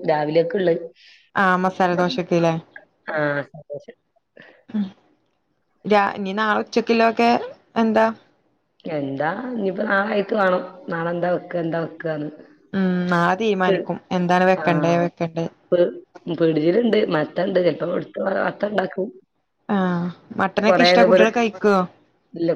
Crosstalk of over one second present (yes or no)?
no